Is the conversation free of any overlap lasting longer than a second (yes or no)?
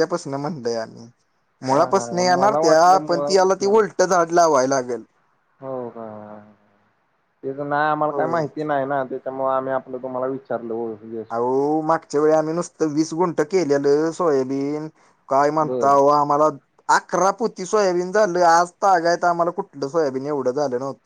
no